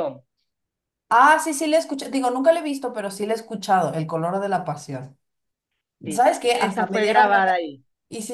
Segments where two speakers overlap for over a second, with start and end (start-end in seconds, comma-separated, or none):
6.1-7.5